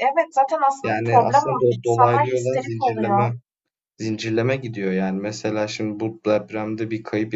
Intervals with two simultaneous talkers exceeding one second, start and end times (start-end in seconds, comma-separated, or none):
0.8-3.2